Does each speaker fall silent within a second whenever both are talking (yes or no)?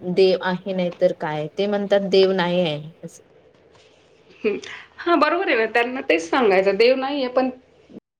yes